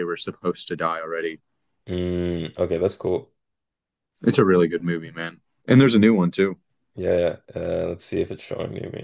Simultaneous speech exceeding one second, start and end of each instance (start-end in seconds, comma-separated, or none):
none